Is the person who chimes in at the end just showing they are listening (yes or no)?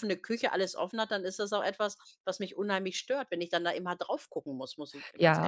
no